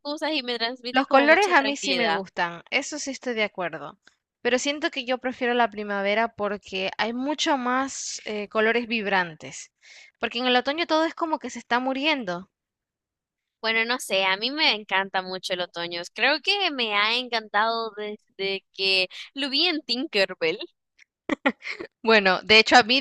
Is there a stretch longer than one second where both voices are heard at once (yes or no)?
yes